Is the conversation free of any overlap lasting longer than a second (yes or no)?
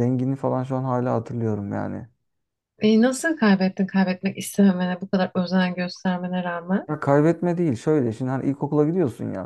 yes